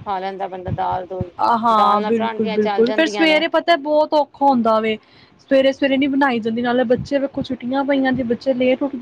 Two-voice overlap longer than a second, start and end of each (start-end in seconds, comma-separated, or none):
1.8-3.4